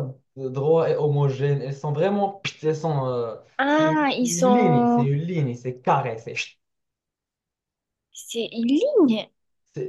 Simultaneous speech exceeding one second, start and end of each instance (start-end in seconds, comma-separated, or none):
3.6-5.1